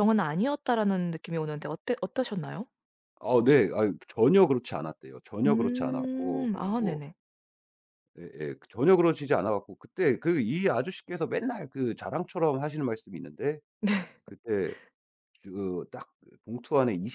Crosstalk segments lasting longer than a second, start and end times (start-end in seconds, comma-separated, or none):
5.5-7.0